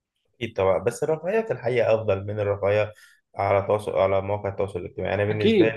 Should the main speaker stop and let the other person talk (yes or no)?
yes